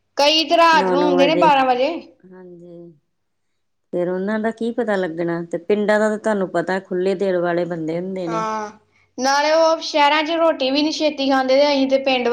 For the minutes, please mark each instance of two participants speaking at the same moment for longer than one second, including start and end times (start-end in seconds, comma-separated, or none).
0.8-2.1